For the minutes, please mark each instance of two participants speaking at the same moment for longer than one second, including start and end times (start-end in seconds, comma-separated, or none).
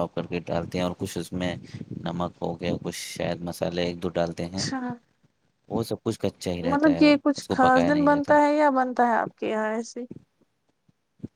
6.7-8.3